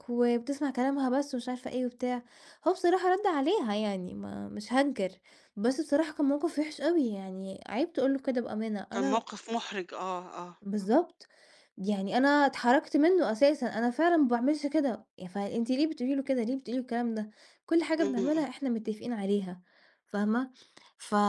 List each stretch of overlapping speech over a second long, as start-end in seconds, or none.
none